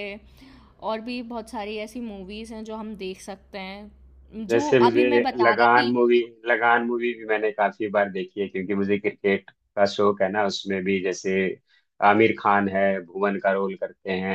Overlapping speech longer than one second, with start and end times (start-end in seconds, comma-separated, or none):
4.5-5.9